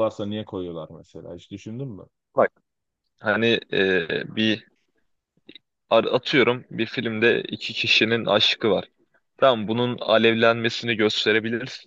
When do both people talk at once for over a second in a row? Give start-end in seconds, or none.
none